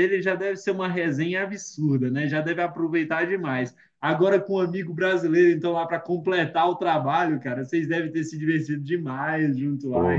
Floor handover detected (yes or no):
yes